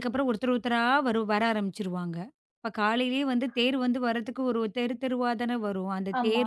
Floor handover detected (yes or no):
no